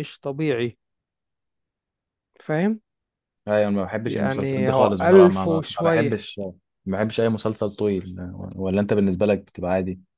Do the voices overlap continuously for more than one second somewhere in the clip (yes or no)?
yes